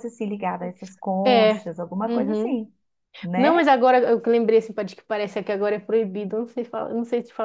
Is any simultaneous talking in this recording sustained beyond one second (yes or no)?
yes